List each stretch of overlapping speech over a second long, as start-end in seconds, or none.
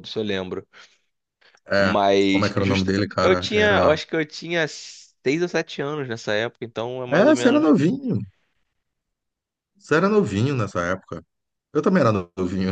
1.8-4.0